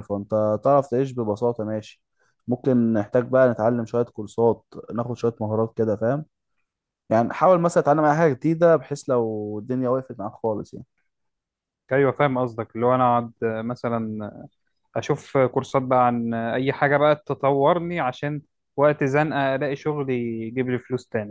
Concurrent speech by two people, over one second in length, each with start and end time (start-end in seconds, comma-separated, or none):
none